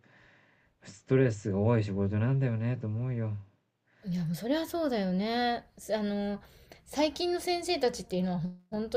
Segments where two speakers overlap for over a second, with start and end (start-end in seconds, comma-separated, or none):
none